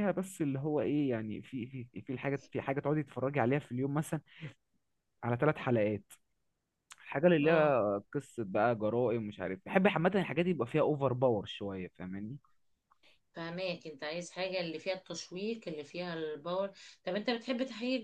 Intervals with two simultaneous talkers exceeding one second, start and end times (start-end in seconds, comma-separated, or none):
none